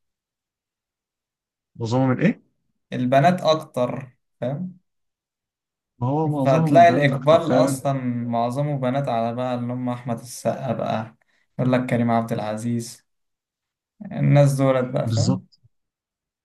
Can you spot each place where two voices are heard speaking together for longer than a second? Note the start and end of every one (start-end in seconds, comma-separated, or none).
6.4-7.9